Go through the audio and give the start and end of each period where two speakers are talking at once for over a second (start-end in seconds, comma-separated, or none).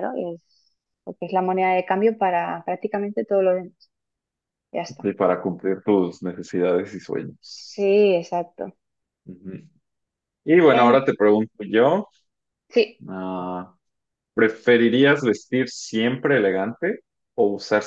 none